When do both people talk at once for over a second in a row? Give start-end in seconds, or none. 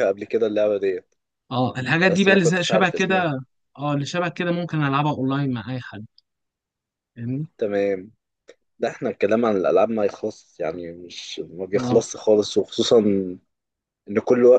2.0-3.3